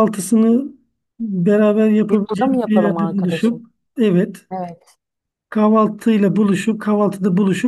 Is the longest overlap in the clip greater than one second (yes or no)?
yes